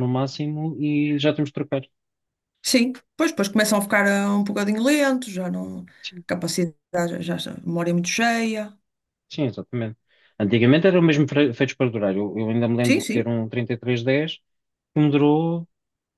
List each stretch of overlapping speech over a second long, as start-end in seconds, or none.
none